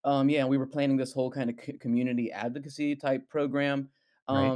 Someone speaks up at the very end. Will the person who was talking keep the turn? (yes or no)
yes